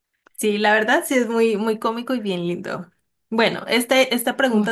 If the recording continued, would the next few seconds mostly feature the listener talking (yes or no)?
no